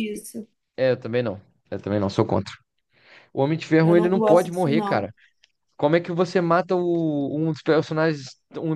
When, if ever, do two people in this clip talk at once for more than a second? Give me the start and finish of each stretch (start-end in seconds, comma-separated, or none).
3.8-5.1